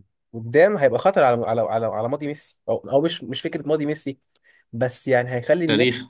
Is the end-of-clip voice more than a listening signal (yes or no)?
no